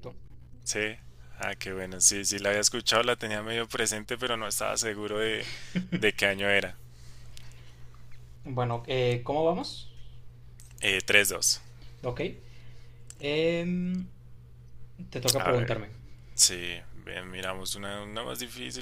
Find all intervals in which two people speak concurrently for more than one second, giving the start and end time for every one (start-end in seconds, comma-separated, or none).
none